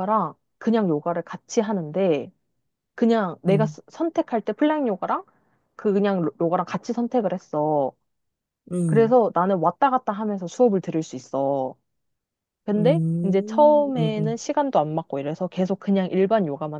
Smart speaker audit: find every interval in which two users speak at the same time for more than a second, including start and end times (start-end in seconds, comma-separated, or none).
12.8-14.4